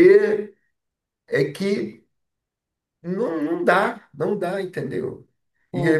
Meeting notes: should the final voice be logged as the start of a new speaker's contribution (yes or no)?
no